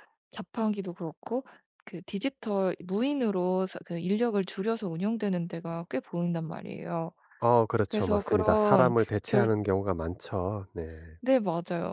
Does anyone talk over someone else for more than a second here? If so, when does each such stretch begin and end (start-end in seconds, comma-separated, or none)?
7.9-9.5